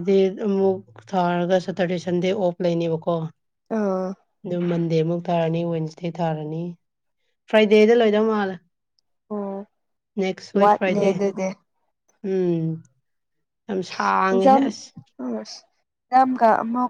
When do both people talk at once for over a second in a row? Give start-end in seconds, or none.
none